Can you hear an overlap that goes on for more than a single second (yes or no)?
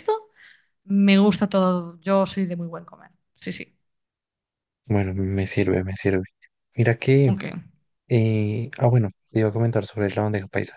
no